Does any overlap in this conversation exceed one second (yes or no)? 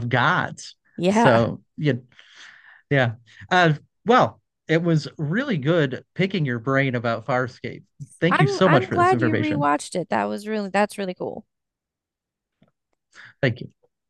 yes